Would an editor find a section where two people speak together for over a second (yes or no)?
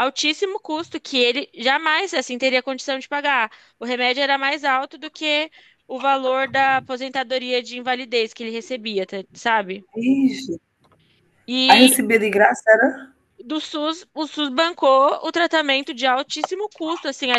no